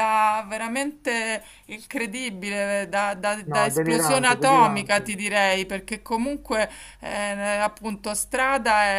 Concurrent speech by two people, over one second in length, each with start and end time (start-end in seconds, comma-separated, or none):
3.4-5.2